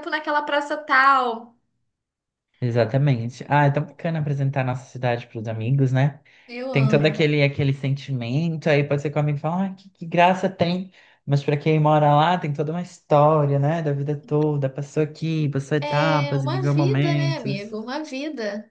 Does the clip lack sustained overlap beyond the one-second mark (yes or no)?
no